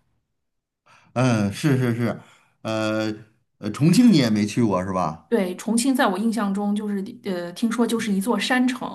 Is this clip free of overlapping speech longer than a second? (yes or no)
yes